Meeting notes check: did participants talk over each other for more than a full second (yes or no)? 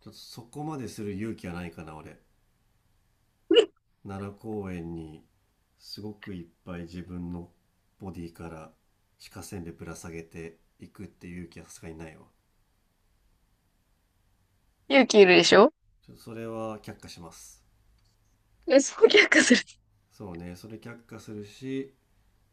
no